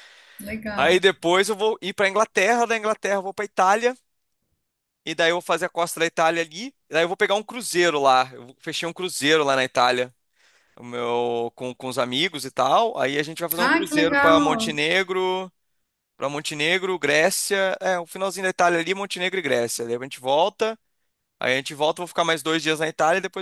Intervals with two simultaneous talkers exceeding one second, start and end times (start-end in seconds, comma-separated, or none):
13.6-14.8